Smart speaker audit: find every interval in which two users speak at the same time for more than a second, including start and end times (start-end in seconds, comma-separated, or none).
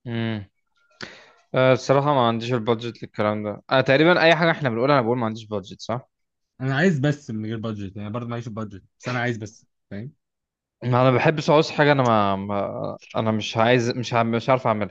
none